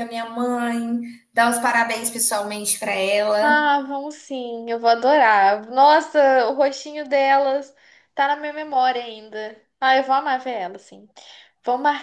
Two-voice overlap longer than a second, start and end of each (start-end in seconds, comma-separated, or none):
none